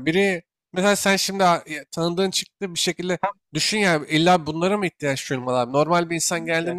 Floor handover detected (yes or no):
no